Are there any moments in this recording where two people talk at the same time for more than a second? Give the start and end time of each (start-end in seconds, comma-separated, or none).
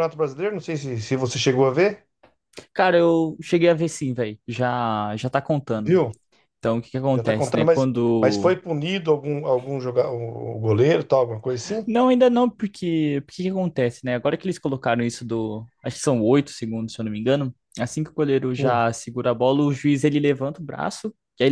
7.1-8.6